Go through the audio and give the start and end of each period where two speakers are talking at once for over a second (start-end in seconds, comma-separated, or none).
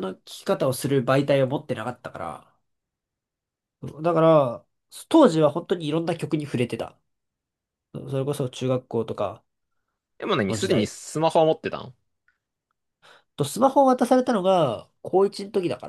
none